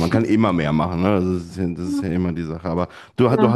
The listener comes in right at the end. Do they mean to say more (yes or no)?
no